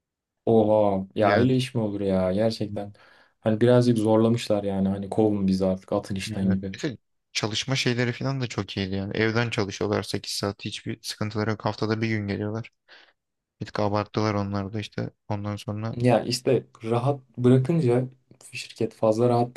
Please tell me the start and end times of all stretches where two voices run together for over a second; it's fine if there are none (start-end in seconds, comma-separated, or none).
none